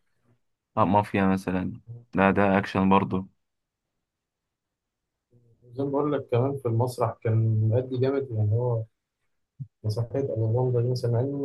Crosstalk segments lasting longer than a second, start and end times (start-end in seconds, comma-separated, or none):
none